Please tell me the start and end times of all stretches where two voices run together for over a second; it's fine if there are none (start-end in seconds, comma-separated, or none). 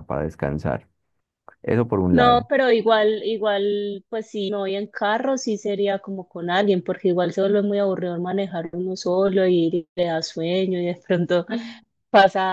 none